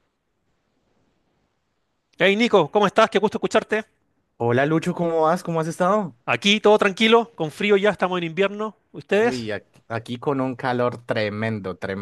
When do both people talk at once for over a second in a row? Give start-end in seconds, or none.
none